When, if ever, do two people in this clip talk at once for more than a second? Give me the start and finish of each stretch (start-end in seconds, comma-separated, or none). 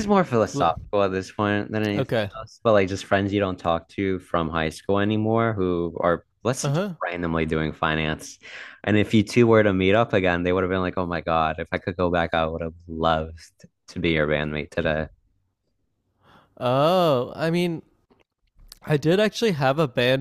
none